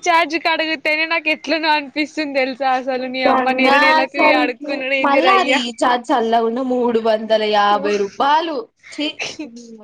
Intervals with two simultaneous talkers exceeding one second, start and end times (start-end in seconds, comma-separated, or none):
none